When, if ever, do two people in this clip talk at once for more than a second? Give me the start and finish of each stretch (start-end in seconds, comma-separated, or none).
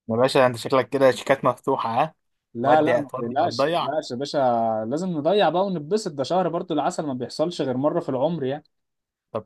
2.6-3.9